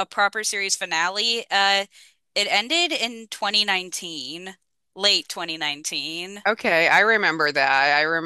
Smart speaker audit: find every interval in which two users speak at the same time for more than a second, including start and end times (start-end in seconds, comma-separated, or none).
none